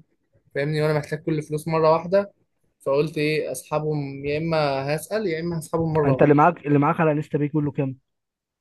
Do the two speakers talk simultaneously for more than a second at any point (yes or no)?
no